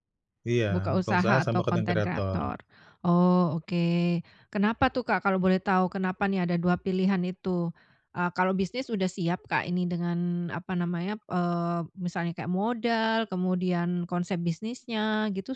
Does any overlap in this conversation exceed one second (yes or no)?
yes